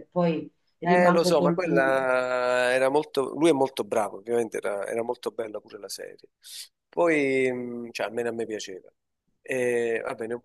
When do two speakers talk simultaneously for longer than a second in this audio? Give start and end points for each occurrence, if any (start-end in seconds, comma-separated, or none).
0.8-2.2